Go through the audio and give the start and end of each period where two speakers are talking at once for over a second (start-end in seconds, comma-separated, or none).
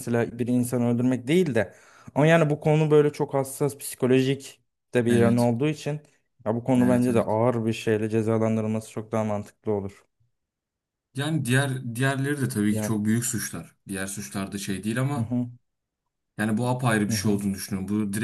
none